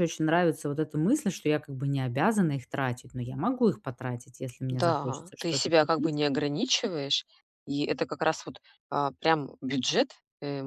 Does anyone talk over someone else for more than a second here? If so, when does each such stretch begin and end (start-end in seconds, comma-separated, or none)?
4.7-6.2